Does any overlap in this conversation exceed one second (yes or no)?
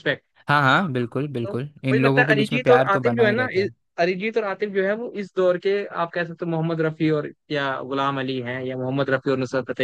yes